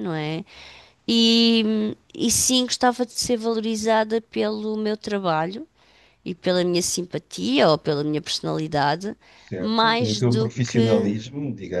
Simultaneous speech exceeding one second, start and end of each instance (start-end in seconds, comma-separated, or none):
9.6-11.1